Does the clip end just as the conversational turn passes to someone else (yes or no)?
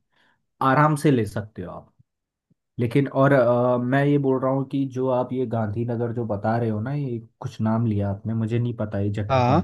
no